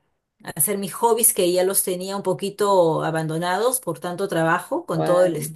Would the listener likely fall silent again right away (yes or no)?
yes